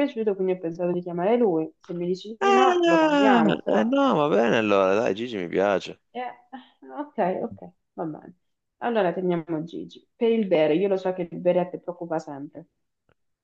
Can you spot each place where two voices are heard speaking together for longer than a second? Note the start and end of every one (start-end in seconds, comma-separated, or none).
2.4-3.9